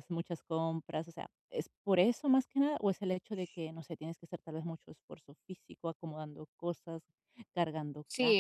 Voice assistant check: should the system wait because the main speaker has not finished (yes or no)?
no